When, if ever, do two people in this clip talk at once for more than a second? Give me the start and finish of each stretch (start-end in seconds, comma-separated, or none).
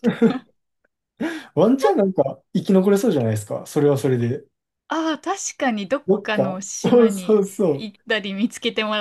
6.1-7.9